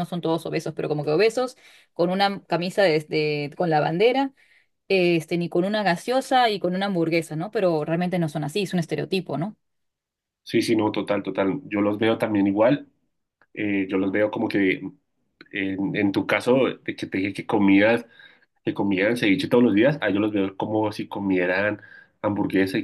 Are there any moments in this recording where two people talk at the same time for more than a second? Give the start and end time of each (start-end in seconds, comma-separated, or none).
none